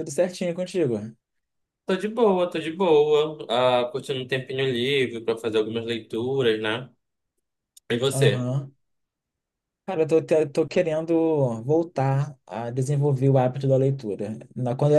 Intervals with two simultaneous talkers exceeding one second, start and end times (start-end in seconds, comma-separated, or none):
none